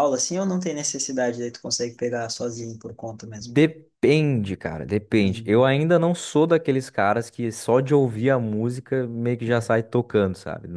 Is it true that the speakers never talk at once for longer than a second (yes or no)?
yes